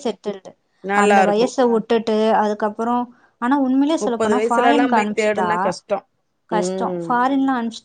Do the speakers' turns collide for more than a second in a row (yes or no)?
yes